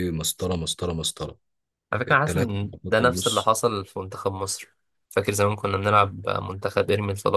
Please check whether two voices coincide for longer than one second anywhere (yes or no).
yes